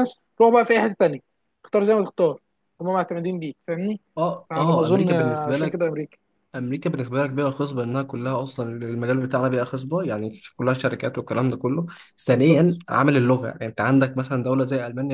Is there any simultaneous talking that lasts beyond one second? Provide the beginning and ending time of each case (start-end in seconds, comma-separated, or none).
4.5-5.9